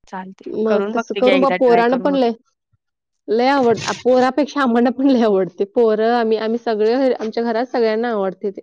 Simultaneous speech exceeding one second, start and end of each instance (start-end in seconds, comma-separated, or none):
0.6-2.3